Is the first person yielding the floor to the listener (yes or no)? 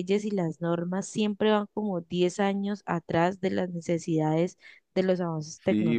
yes